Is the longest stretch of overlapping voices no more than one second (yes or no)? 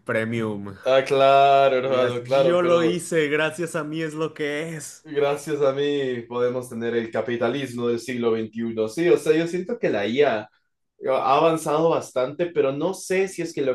no